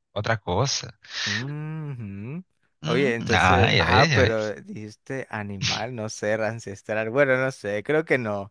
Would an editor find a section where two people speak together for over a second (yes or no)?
yes